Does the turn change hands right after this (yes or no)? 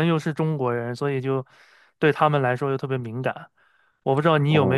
no